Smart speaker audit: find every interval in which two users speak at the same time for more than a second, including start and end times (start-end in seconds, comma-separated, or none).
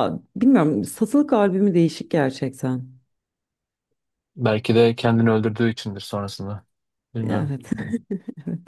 none